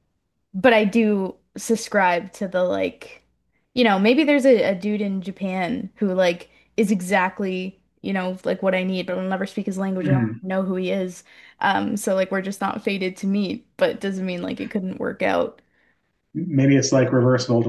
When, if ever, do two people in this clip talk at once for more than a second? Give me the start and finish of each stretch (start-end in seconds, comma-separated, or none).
none